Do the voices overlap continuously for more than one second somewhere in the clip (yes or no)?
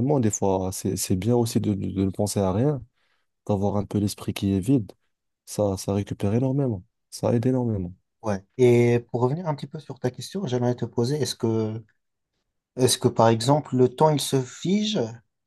no